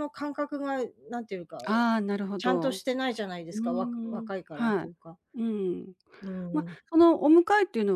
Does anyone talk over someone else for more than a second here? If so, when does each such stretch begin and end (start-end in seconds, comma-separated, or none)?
3.5-4.9